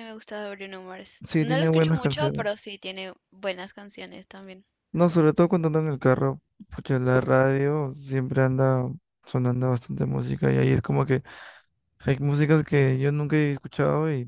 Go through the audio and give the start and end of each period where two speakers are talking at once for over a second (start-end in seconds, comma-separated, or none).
1.3-2.6